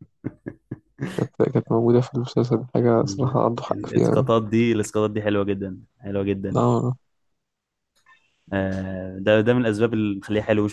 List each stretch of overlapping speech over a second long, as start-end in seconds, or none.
3.0-4.3